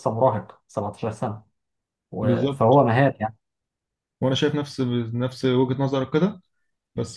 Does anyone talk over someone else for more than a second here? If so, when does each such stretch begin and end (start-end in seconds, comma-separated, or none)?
none